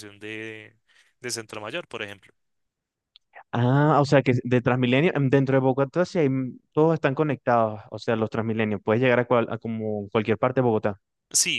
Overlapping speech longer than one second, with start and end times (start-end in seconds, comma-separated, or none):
none